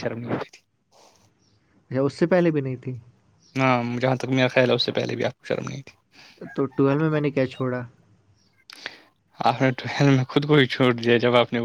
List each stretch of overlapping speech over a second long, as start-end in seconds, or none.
none